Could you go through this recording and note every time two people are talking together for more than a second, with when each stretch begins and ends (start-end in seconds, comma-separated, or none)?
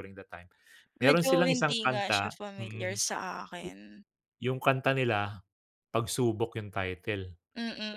1.0-3.0